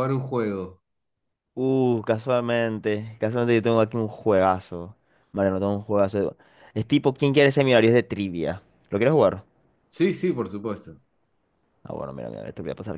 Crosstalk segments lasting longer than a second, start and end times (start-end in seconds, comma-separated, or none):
none